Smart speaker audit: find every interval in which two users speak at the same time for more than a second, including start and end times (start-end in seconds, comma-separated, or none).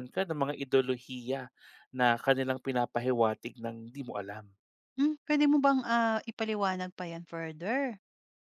none